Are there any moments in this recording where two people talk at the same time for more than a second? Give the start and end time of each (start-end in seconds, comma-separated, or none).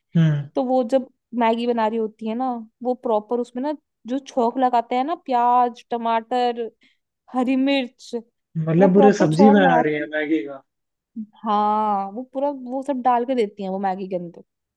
8.8-10.1